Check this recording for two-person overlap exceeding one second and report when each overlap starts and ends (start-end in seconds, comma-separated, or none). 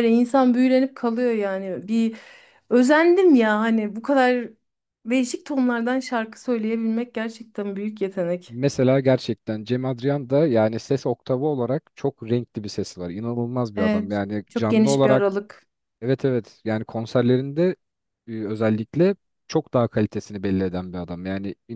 13.8-15.4